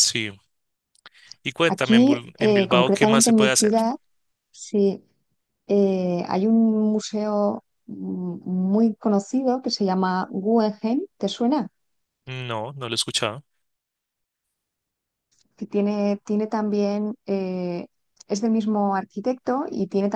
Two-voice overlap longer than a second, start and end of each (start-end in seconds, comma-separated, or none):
1.7-3.7